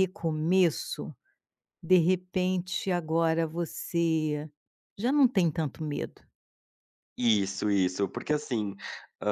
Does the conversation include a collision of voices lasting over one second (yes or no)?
no